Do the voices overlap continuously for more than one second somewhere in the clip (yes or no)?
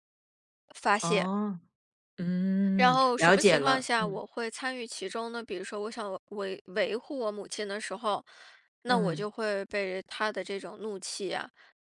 yes